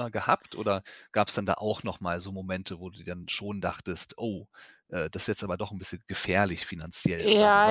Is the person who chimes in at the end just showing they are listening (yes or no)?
no